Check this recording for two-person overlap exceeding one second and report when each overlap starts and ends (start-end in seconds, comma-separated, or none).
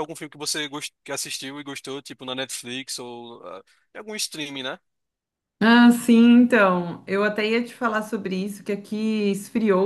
none